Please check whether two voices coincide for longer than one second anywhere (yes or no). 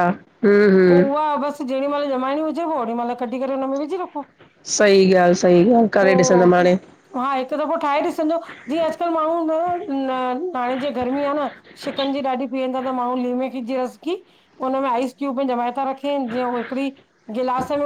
no